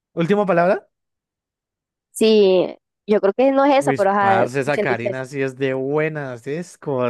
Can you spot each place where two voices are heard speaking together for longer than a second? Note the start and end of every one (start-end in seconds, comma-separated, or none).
3.8-5.2